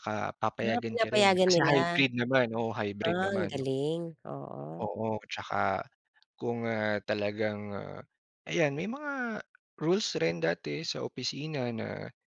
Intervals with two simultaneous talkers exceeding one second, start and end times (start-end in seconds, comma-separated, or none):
0.6-2.0